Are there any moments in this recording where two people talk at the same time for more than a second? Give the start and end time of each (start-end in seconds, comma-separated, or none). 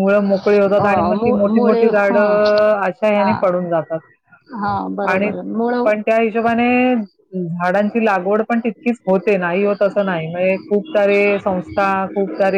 0.8-2.4